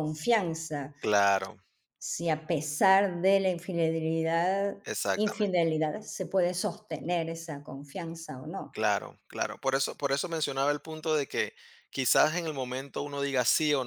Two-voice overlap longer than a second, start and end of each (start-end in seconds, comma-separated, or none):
none